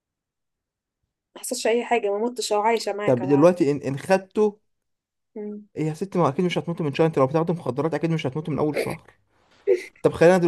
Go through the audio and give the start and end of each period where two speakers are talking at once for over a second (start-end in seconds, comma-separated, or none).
none